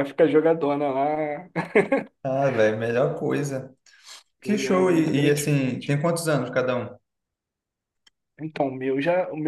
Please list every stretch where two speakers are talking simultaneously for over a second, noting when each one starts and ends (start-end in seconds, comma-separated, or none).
4.5-5.9